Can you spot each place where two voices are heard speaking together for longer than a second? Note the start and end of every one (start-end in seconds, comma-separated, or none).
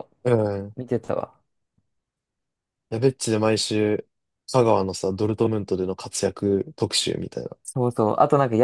none